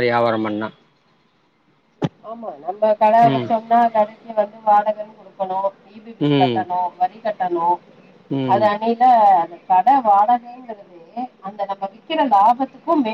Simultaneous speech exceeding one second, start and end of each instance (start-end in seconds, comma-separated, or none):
none